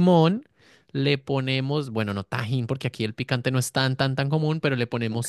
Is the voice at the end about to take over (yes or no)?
no